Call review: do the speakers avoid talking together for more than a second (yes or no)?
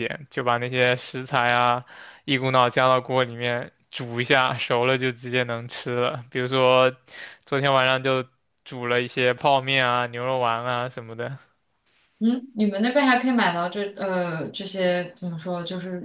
yes